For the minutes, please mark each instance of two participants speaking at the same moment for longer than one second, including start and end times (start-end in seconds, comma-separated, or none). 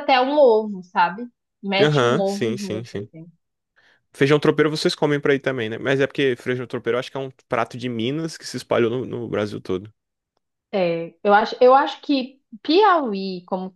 1.8-3.1